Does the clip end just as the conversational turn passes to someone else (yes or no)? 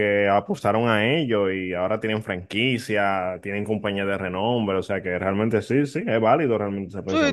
yes